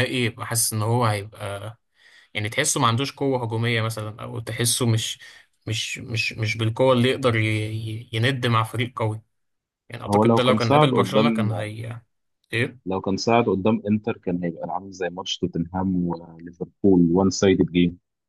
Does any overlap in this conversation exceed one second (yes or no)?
yes